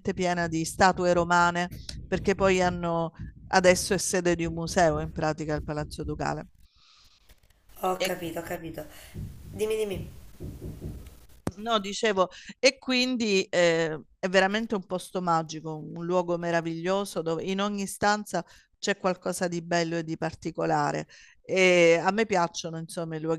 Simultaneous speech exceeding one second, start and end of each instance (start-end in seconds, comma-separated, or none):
none